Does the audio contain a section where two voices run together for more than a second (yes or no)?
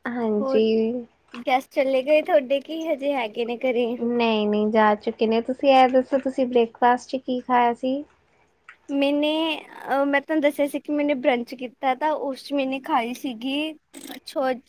no